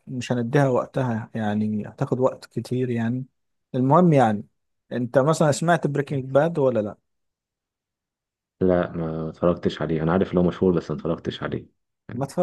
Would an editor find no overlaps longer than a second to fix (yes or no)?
yes